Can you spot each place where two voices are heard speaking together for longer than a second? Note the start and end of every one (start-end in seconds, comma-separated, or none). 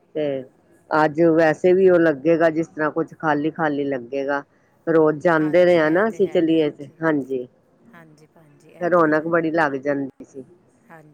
5.4-7.0